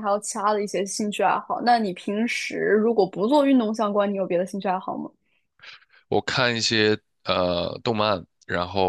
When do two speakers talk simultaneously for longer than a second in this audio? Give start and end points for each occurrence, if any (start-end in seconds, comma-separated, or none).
none